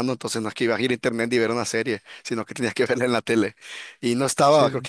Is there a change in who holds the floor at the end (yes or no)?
no